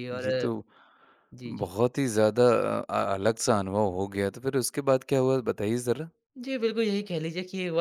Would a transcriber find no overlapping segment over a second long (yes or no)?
yes